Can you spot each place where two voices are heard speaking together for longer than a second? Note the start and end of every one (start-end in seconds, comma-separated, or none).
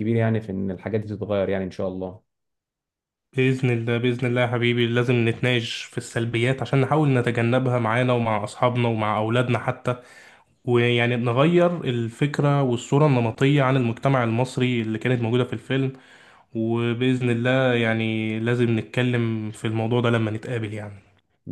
none